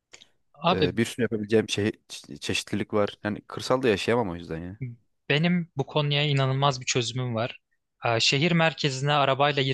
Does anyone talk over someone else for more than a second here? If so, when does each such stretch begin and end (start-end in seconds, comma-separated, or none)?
none